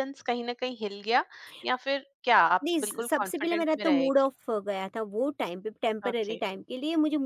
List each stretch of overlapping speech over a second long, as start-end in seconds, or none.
2.6-4.3